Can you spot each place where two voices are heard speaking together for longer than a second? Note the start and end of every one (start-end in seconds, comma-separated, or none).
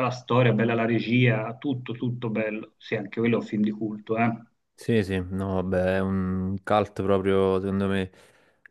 none